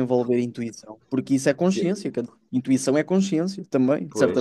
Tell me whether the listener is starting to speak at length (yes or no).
yes